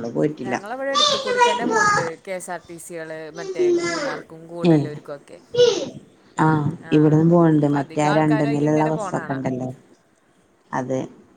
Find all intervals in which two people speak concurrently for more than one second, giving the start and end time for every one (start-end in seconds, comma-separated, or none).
7.6-9.4